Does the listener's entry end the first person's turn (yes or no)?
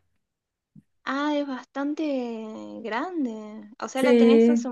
no